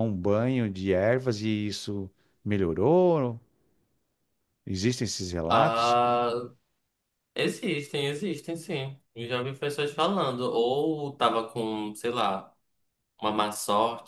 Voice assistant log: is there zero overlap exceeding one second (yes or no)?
yes